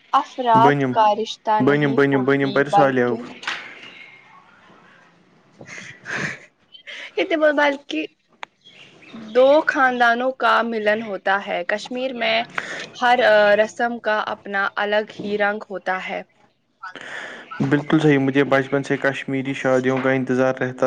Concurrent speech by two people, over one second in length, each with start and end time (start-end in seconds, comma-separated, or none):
1.6-3.1